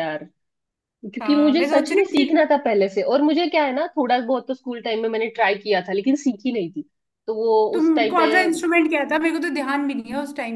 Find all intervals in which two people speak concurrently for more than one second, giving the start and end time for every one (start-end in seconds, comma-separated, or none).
1.2-2.4